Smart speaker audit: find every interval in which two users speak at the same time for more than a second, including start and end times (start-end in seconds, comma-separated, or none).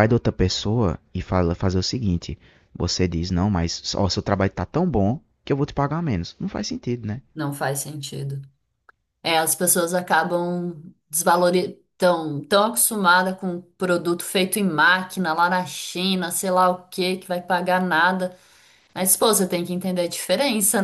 none